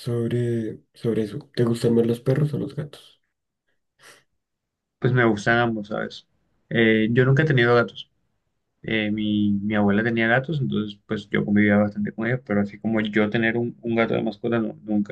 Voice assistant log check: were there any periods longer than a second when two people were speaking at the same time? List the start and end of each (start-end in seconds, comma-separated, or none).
none